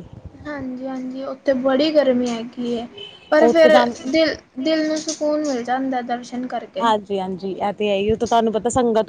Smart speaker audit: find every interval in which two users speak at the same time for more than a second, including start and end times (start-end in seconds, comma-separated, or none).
none